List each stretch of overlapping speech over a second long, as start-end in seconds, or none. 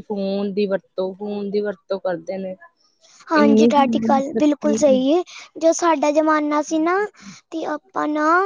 none